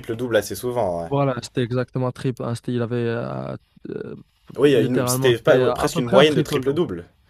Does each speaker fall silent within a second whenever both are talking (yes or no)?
no